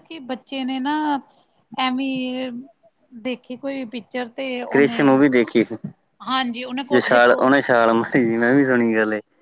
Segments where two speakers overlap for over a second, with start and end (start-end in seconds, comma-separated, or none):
6.9-8.8